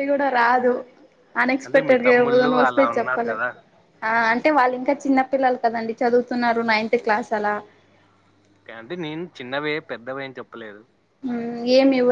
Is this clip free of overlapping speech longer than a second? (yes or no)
no